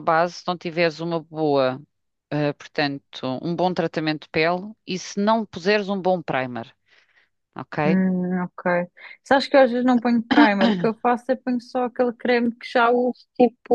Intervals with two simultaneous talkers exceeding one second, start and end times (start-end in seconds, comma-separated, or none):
none